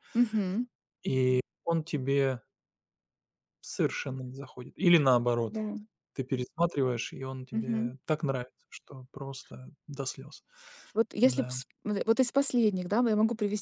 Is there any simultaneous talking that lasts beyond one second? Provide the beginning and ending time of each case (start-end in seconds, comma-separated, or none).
none